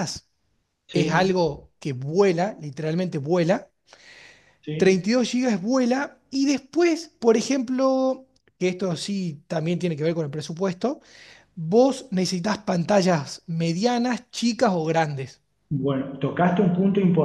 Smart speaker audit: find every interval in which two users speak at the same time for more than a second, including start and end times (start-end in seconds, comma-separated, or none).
none